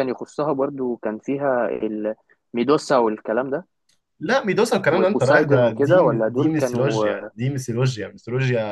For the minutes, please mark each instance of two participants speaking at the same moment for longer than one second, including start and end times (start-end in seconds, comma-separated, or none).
4.9-7.0